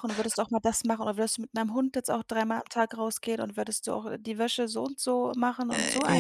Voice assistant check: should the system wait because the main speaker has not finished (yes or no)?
yes